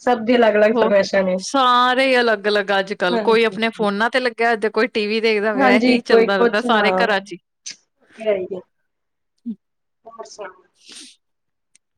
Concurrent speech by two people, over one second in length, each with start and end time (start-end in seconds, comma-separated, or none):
5.6-7.2